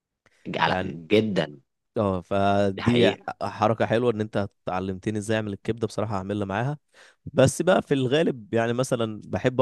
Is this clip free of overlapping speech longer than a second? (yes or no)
yes